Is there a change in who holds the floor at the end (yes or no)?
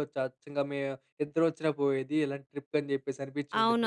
yes